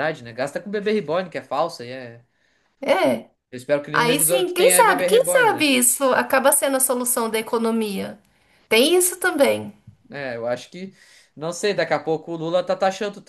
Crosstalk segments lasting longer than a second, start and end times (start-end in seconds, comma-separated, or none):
3.9-5.7